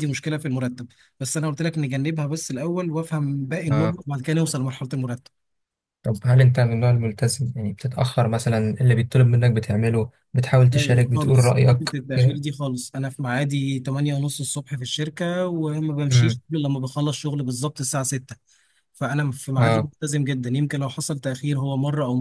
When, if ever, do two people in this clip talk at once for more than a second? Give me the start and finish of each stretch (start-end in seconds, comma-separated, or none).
10.7-12.4